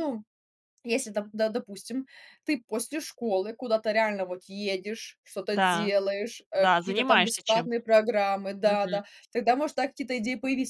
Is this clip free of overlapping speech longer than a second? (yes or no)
no